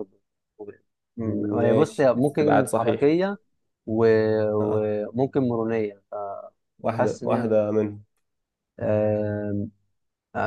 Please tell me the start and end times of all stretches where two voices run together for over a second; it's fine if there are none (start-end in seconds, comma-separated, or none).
1.2-3.0